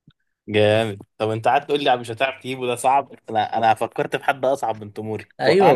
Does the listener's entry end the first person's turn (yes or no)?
yes